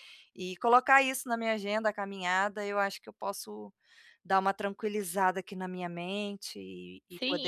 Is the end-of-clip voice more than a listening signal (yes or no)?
yes